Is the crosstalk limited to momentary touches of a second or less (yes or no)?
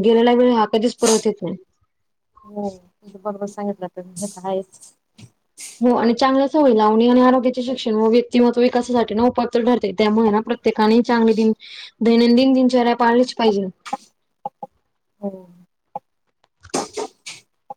yes